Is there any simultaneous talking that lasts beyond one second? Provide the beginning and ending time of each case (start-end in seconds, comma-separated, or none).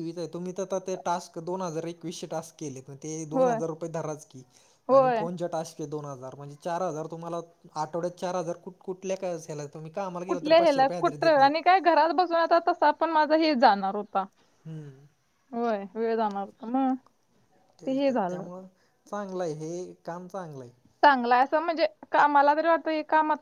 10.3-11.7